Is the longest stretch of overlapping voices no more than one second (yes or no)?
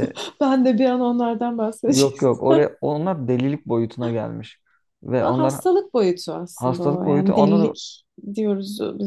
no